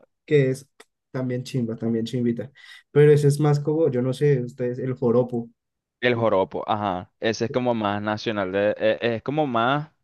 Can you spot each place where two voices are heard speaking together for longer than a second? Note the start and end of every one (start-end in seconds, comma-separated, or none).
none